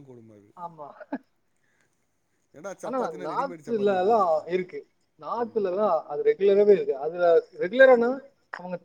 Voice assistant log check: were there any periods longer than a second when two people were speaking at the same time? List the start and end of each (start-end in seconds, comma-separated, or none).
2.9-4.5